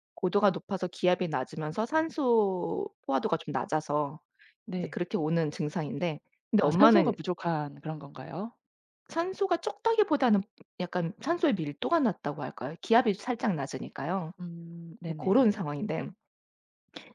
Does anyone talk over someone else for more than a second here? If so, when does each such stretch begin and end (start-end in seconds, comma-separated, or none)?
none